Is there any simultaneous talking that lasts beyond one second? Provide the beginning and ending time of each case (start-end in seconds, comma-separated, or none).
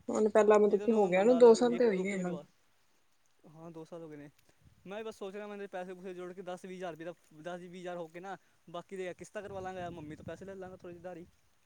0.7-2.4